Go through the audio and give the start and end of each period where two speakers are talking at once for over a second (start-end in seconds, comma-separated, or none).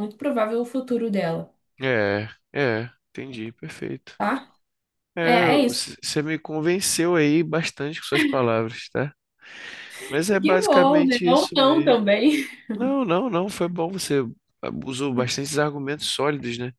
10.4-12.0